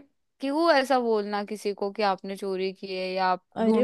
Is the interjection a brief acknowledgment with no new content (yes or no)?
no